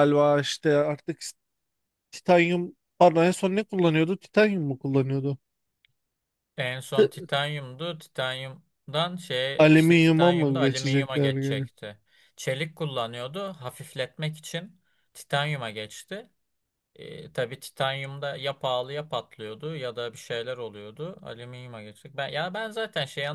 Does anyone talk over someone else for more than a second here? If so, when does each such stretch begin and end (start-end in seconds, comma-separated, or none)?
9.6-11.7